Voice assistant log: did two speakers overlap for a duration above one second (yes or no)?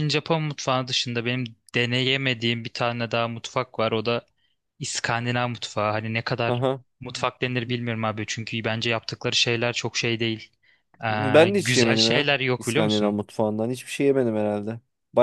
yes